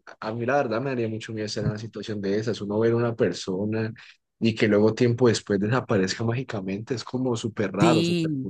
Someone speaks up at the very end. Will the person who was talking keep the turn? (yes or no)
no